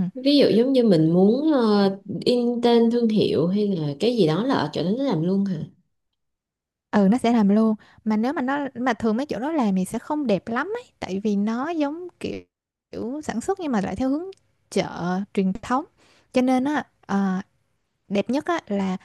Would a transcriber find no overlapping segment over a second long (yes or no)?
yes